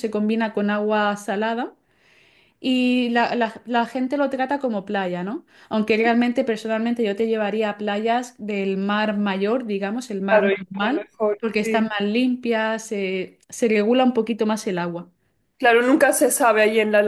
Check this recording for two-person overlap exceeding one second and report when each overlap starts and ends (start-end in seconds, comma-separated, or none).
10.3-11.9